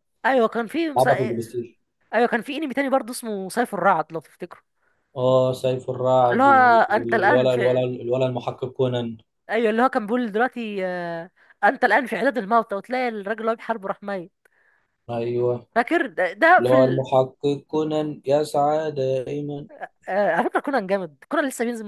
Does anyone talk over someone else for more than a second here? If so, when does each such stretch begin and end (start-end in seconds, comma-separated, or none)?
6.3-7.9